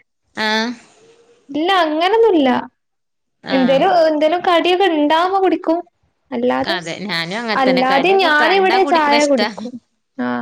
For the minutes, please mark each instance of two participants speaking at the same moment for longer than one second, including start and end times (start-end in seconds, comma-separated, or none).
7.6-9.5